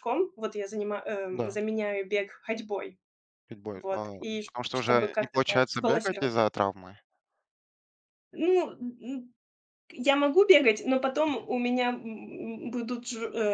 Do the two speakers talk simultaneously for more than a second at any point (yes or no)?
yes